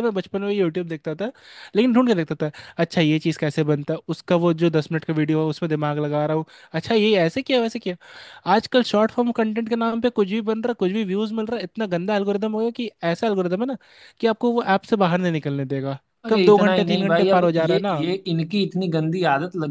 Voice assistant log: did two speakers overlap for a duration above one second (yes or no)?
yes